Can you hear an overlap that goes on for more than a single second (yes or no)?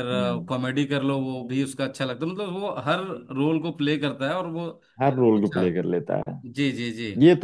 no